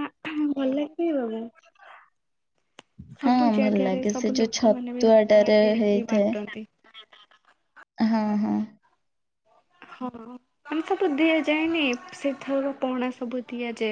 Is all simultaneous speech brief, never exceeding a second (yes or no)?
no